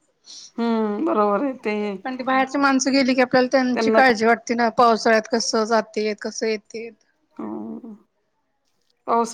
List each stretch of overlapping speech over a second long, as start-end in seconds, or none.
none